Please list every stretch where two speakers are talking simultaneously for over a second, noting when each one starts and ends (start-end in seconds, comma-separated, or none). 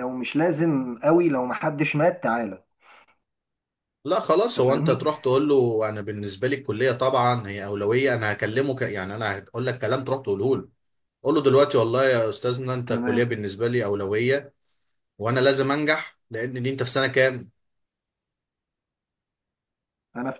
none